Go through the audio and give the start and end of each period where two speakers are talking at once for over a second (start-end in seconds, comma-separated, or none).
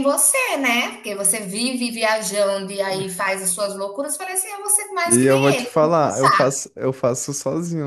5.0-6.4